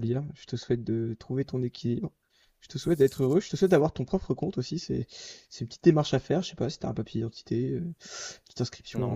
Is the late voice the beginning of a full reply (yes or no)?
no